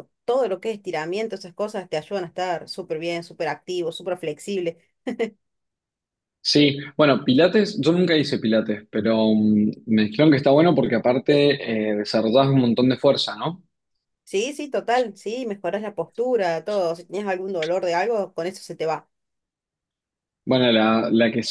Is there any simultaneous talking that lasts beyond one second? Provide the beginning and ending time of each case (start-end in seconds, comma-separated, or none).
none